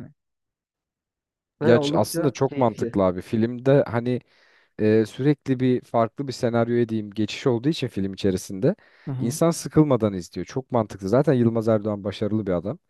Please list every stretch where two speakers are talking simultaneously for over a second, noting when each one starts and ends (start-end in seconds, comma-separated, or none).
1.6-3.0